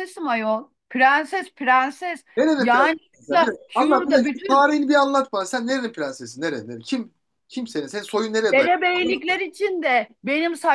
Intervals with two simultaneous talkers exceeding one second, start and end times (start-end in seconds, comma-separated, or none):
2.4-4.7